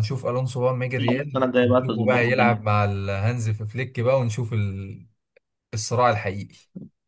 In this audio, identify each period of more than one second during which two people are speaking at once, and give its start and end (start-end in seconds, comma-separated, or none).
1.1-2.6